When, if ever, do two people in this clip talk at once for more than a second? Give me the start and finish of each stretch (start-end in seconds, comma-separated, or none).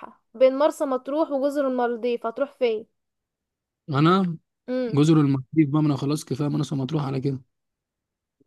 none